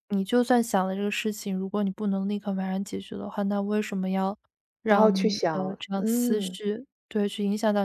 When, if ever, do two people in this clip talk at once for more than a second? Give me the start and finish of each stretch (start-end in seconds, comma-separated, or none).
4.8-6.6